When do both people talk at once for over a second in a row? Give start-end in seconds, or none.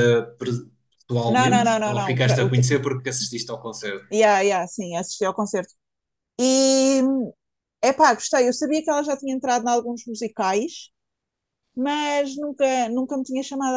1.3-2.6